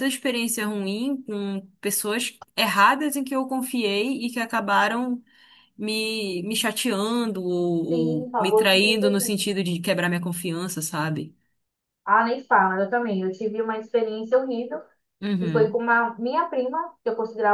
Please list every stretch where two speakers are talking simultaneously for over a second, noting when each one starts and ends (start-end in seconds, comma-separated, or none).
7.9-9.5